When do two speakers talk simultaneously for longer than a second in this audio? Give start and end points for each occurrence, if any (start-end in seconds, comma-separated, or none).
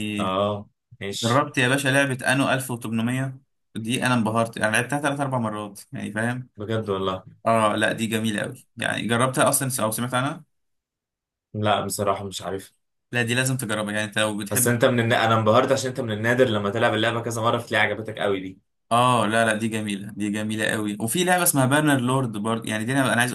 none